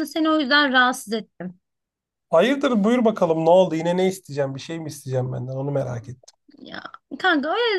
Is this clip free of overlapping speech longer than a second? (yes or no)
yes